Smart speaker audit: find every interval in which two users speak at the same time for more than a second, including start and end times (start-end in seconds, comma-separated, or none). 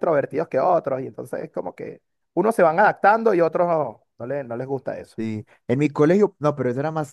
none